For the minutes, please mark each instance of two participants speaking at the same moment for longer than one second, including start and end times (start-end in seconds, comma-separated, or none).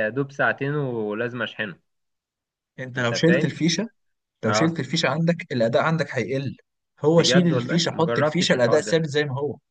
7.1-8.9